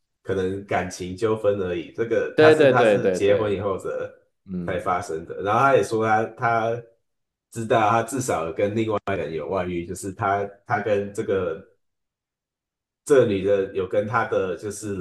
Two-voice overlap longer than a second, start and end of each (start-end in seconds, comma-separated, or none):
2.3-3.7